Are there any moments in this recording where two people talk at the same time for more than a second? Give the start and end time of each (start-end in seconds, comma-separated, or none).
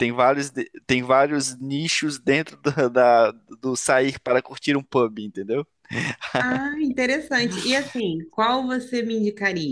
none